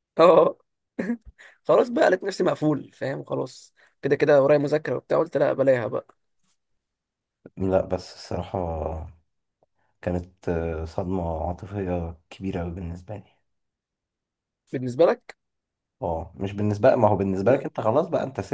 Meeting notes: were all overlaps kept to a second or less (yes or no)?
yes